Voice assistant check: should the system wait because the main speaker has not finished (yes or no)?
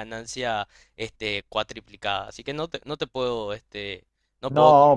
no